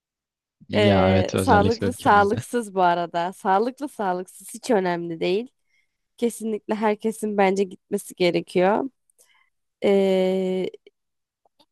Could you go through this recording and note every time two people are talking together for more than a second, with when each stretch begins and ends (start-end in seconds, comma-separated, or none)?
0.8-2.4